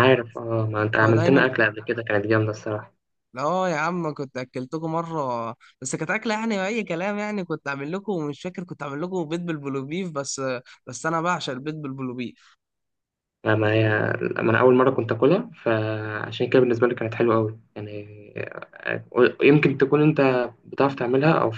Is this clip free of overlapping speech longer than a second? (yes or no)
yes